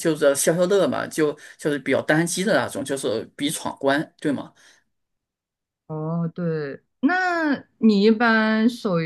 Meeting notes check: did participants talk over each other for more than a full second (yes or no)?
no